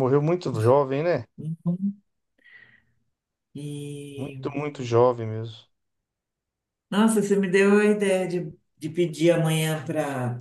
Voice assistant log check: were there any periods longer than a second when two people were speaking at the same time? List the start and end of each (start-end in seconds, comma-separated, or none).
none